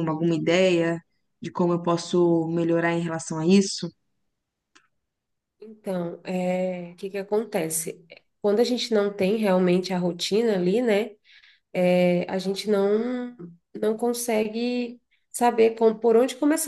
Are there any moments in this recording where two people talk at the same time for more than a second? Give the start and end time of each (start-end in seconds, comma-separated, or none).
none